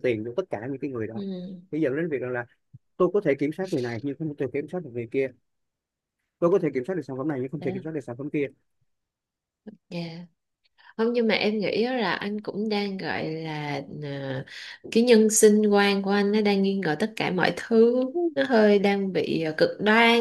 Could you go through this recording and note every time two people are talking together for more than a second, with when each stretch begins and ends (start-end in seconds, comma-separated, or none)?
none